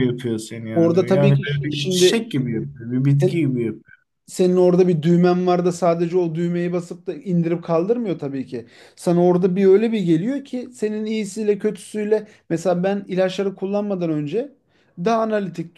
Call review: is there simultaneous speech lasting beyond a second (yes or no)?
yes